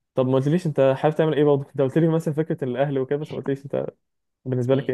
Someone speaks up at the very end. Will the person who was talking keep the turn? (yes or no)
no